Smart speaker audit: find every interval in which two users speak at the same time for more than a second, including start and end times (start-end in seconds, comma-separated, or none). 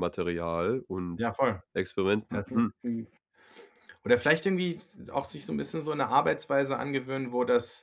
none